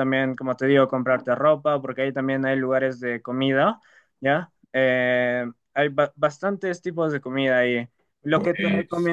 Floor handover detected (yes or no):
no